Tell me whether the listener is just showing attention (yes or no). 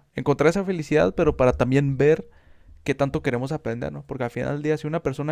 yes